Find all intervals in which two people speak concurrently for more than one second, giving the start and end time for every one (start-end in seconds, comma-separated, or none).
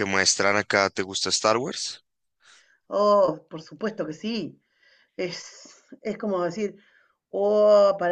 none